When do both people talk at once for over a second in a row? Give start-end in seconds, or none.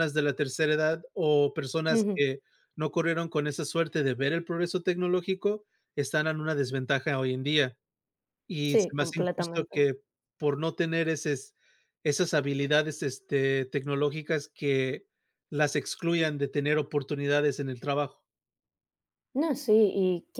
8.6-9.9